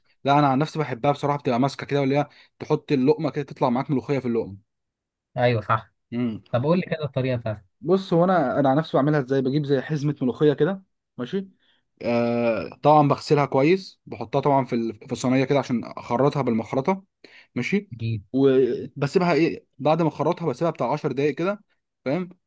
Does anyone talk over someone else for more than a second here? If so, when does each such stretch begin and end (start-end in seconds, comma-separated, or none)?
none